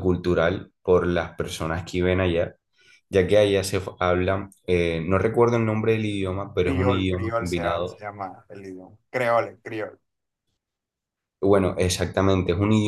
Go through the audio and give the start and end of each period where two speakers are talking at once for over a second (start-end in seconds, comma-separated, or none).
6.6-8.0